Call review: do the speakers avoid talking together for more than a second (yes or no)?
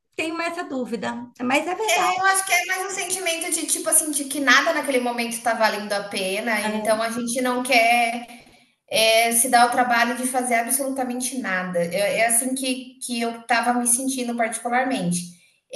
yes